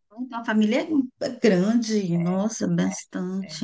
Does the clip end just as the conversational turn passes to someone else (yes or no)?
yes